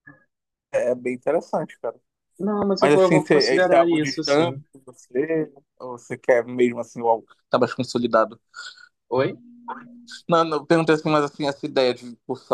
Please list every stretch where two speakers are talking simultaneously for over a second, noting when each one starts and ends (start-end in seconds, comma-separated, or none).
2.8-4.6